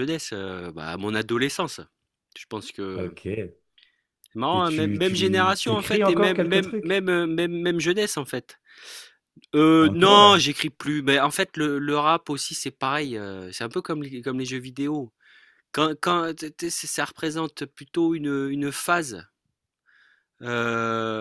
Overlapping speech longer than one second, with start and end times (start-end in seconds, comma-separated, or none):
4.5-7.1